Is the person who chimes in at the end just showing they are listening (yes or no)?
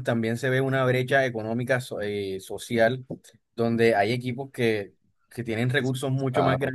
yes